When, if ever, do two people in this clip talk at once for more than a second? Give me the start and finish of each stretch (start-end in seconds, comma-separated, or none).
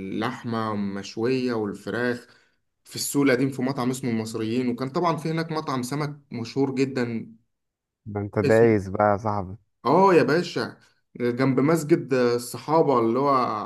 none